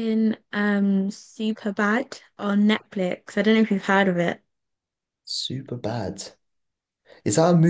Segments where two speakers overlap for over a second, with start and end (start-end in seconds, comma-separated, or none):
none